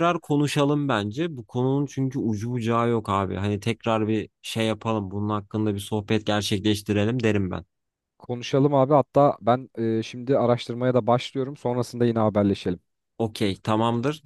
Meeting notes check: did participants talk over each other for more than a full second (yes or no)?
no